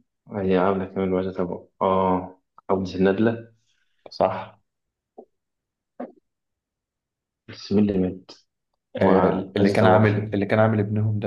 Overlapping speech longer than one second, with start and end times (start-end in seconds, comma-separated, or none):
8.9-10.2